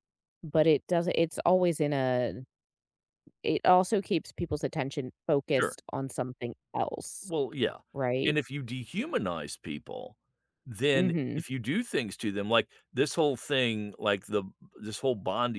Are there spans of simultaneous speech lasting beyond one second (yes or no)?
no